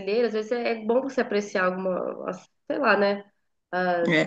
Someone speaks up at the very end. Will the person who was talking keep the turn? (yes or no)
no